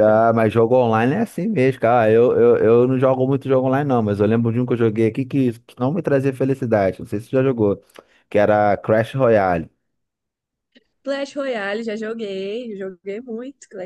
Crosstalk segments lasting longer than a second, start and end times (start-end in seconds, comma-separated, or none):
none